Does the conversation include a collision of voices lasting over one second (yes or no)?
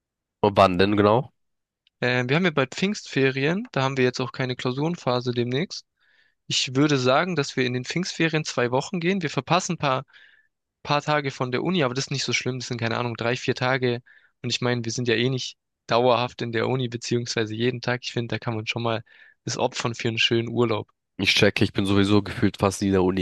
no